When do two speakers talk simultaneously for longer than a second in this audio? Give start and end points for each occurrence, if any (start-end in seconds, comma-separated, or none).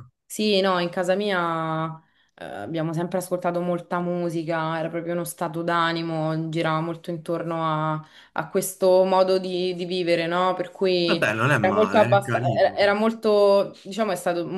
11.0-12.8